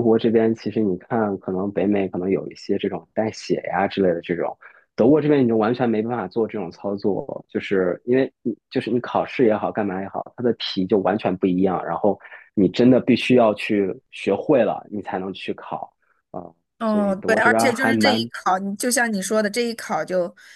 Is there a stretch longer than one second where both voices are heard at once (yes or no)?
yes